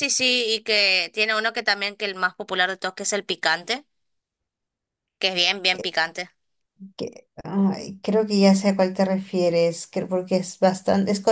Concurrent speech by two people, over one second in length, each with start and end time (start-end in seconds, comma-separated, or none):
none